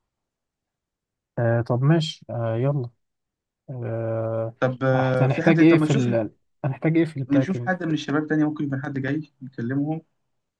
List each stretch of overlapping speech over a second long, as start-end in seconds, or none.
4.9-6.2